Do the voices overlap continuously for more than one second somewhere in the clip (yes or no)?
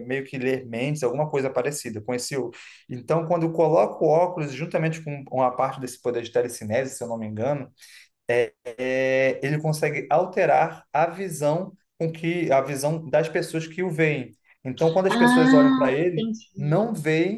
yes